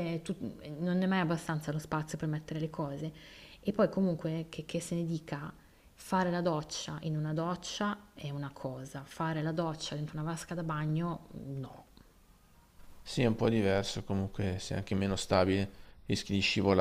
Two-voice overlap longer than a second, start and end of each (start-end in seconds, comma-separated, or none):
none